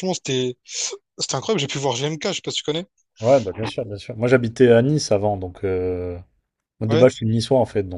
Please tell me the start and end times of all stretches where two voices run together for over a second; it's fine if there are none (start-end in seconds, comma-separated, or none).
none